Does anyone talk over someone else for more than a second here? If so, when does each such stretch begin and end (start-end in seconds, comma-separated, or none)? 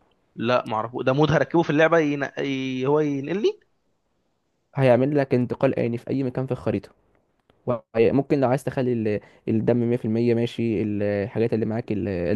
none